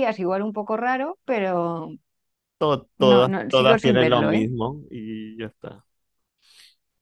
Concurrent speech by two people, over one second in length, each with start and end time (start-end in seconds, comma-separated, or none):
3.0-4.5